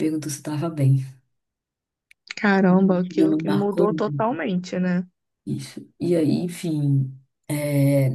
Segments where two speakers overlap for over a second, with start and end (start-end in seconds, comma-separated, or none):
3.0-4.4